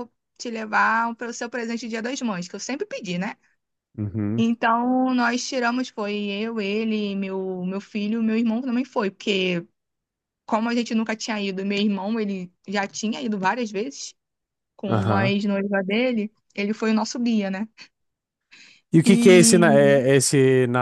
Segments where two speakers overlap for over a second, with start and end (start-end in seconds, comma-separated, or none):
none